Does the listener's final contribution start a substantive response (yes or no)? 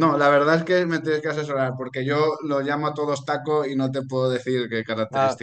yes